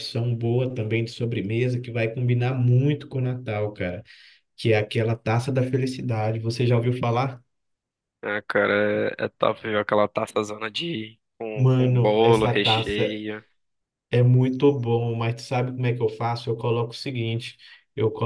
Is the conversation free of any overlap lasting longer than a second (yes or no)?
no